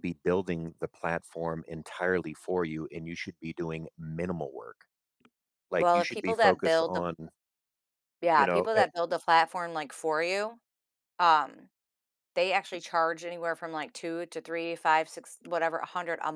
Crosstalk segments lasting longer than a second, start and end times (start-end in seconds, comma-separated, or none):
5.7-7.0